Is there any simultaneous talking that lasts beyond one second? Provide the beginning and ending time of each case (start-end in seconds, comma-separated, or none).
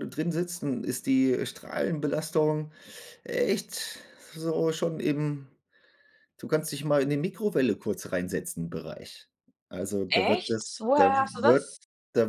10.1-11.7